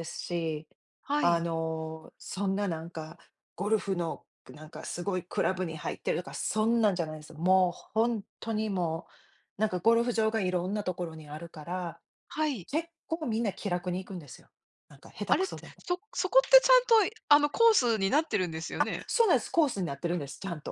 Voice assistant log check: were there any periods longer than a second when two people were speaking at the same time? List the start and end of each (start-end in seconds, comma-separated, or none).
none